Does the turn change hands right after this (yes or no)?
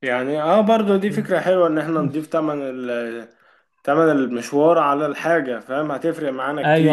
yes